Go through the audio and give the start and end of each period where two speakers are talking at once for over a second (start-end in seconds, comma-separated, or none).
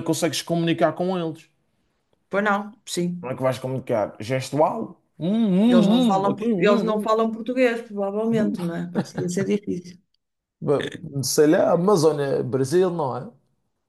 5.7-7.1